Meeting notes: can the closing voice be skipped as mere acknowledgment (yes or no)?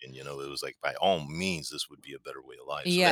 no